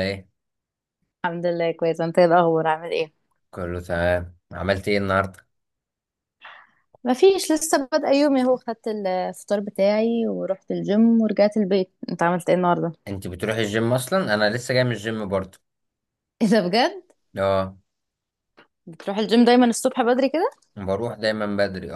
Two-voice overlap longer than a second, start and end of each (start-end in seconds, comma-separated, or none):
none